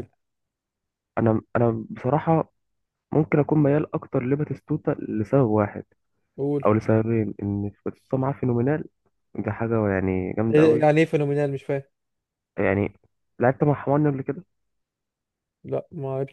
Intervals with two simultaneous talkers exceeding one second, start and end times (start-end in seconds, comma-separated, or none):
none